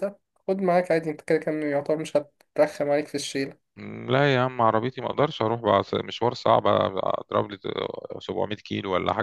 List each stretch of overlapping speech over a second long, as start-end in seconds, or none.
none